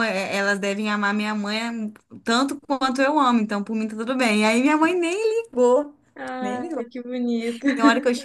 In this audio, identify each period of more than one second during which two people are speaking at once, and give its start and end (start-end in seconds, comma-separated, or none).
none